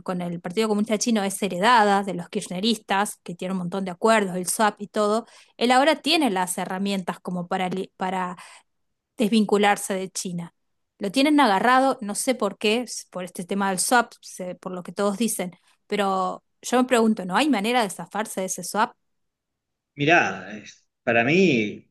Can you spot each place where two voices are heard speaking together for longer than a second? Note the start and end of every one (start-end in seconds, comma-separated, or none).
none